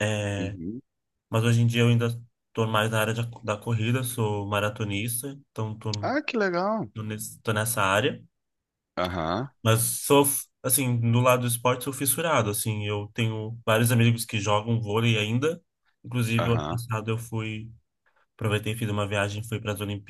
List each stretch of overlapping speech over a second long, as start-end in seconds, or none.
none